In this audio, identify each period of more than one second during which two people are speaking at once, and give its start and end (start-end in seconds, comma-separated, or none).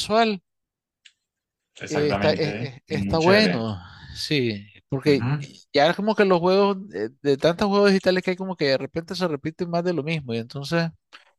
1.9-3.6